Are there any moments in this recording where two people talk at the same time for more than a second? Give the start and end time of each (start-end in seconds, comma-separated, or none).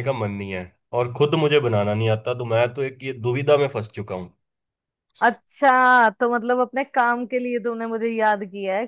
none